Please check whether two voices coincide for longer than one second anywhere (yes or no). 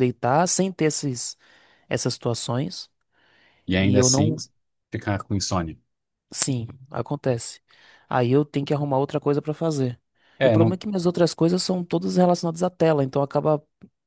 no